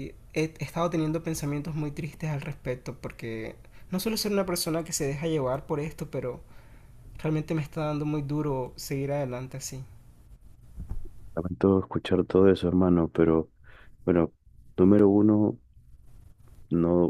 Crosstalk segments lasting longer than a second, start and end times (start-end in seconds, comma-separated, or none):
none